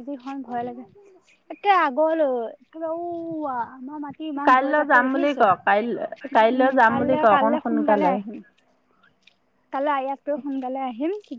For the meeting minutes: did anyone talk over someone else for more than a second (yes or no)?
yes